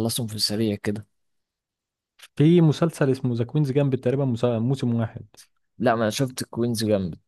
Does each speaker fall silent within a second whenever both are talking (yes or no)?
yes